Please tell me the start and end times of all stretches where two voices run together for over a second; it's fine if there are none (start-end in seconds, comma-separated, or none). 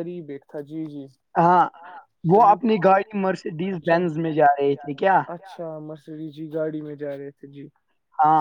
2.3-4.0